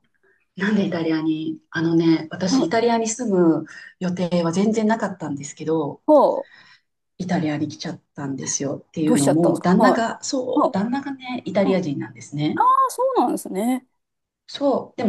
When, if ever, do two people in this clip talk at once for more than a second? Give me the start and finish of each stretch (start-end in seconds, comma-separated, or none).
9.0-10.8